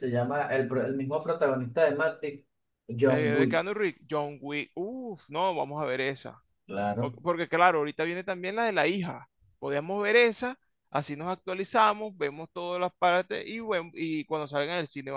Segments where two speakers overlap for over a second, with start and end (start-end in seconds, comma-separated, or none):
none